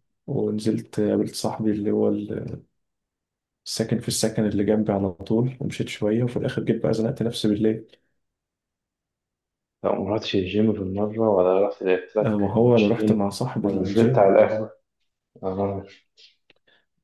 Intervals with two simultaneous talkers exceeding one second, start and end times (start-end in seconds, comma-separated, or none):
12.2-14.4